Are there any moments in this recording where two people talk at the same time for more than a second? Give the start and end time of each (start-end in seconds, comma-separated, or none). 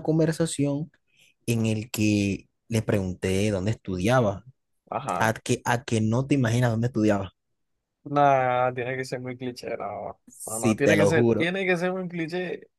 10.3-11.5